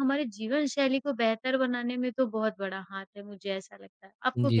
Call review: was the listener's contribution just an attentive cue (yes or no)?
no